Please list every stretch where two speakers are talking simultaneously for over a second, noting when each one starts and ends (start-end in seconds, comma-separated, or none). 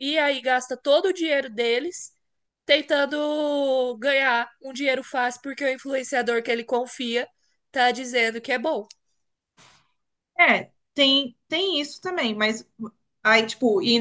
none